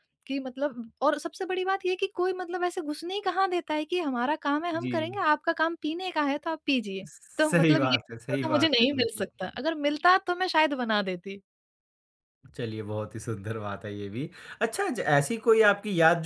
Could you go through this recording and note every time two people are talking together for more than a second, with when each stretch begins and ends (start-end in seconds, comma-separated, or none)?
7.0-9.2